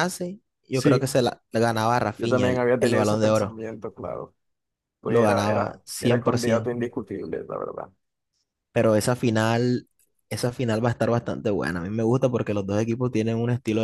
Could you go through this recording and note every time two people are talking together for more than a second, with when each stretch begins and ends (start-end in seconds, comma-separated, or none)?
2.2-3.6, 5.0-6.7